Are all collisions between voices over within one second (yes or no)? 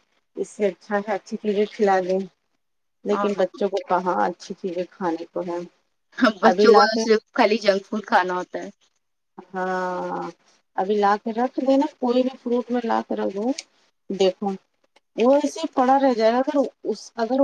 yes